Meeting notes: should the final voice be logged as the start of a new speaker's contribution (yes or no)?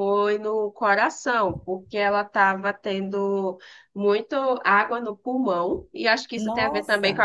no